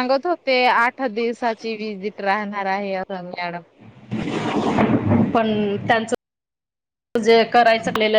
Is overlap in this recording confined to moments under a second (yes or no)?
yes